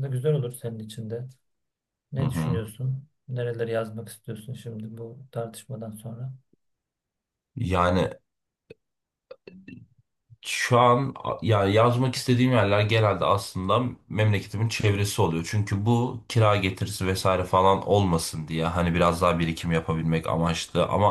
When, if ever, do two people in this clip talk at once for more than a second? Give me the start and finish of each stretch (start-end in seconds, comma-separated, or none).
none